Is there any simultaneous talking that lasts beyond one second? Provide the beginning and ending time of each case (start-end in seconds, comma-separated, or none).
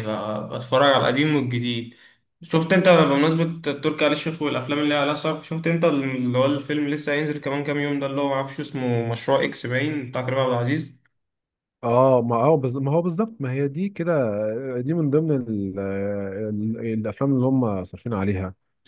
none